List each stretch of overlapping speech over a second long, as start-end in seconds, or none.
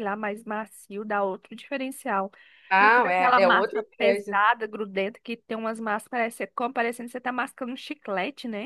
2.8-4.4